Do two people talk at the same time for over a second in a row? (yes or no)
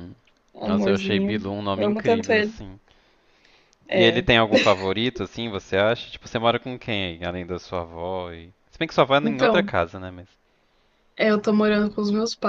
yes